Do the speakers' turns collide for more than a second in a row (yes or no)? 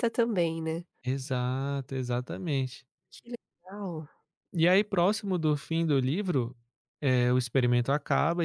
no